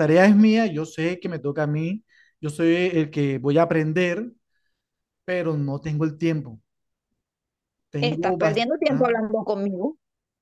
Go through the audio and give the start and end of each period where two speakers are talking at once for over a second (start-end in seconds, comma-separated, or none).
8.0-9.2